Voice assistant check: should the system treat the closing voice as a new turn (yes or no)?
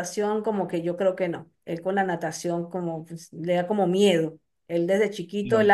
no